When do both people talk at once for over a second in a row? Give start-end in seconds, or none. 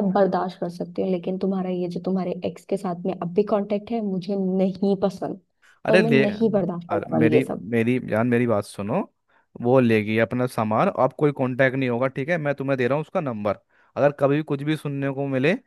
5.9-7.7